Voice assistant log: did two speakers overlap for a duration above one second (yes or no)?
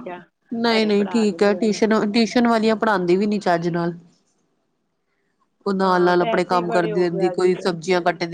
yes